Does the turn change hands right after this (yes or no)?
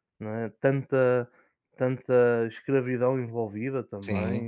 yes